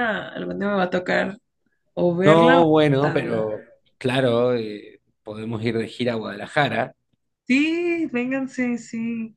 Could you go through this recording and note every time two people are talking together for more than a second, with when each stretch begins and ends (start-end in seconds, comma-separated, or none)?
2.2-3.5